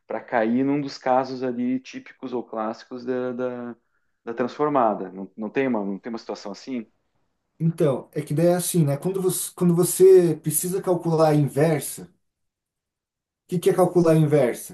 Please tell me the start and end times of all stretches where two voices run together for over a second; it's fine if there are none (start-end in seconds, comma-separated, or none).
none